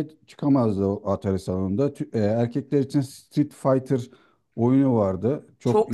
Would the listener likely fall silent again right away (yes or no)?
no